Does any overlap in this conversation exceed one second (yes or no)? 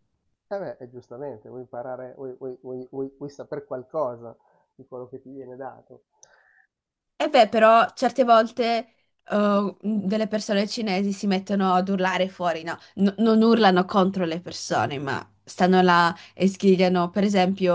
no